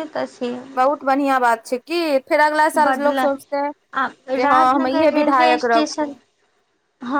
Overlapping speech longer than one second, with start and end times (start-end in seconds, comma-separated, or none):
4.3-6.1